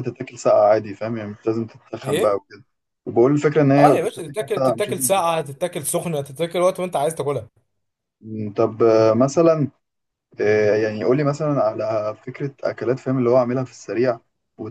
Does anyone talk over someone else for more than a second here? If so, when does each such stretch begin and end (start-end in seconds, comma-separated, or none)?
3.8-5.4